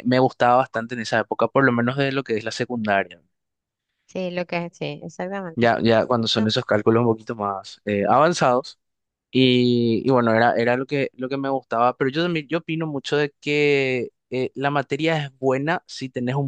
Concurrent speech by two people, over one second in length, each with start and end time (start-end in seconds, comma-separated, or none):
none